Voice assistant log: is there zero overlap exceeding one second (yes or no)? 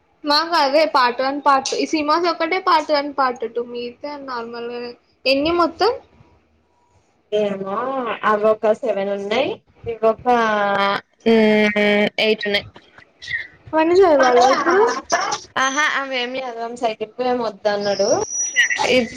yes